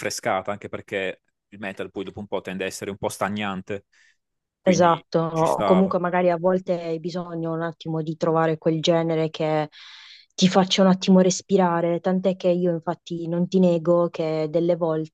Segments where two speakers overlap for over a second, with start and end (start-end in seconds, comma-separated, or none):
4.6-5.9